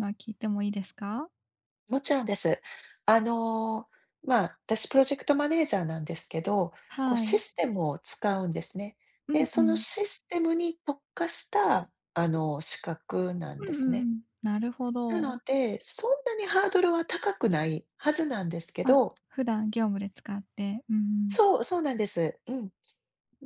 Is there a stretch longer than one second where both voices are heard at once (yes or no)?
no